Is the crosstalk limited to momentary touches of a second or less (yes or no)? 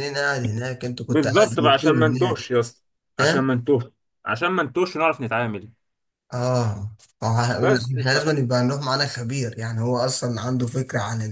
no